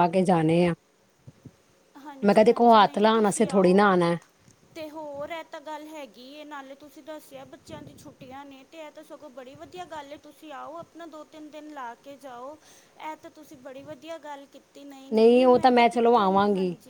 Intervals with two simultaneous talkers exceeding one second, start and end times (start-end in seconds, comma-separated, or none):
2.2-3.9